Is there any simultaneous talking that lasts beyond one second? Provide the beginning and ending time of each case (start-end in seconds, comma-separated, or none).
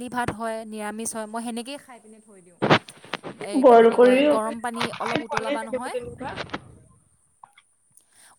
3.6-6.0